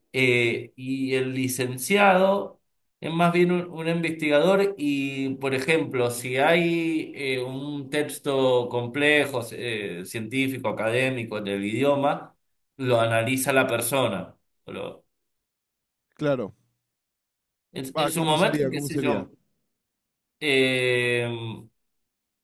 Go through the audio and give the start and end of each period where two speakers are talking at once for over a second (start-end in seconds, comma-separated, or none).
17.9-19.3